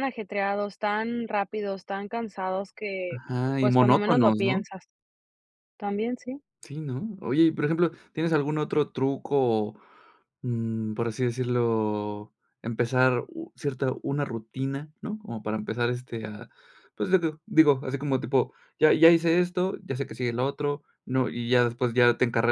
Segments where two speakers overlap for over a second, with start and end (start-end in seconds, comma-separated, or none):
3.1-4.6